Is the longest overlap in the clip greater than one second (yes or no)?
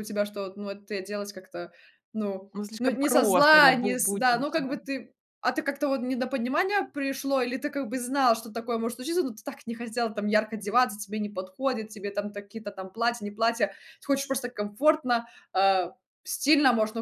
yes